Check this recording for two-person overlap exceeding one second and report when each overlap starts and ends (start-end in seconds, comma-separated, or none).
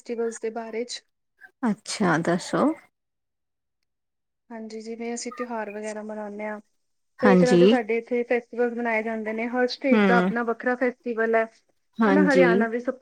none